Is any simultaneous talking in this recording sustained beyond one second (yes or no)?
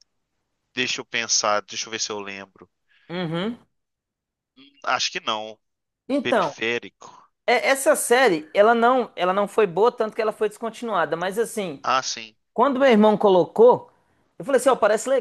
no